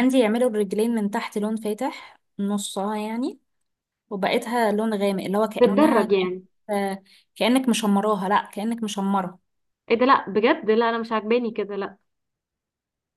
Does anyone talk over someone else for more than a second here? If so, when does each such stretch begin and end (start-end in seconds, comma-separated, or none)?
none